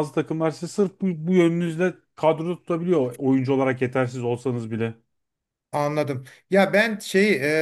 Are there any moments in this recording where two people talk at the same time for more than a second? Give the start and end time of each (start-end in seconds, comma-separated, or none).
none